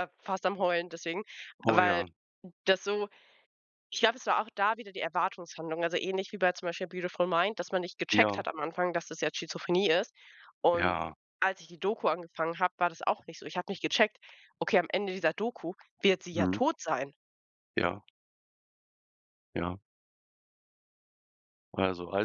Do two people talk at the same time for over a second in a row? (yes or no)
no